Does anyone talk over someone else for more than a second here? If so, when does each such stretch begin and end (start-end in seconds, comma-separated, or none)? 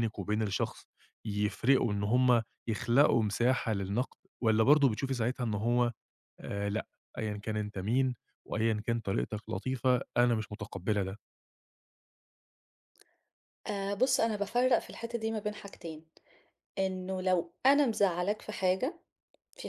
none